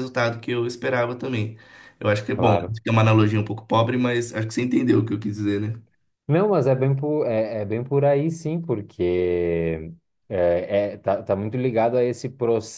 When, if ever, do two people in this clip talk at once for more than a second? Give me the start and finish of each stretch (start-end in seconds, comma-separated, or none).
none